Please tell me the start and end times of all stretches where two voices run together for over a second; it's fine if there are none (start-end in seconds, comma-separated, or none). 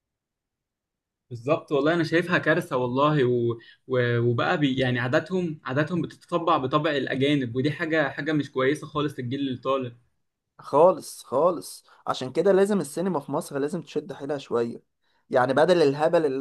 none